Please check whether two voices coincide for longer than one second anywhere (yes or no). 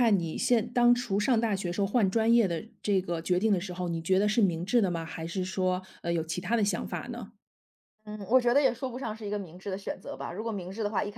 no